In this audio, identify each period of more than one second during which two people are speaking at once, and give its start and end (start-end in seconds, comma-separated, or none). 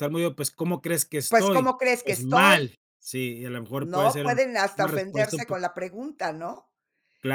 1.3-2.7, 3.8-5.5